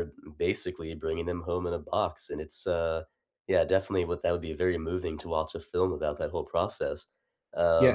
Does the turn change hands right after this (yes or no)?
yes